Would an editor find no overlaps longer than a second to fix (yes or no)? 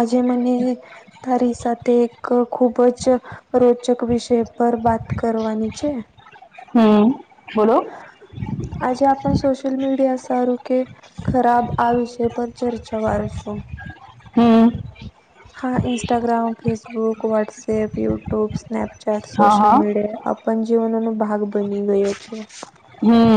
yes